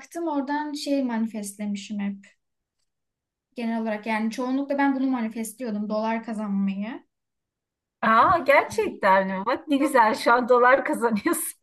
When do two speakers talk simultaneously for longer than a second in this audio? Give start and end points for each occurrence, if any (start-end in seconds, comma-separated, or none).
none